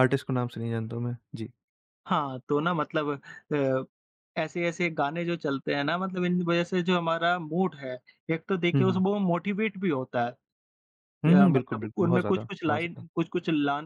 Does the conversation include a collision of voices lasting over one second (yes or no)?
yes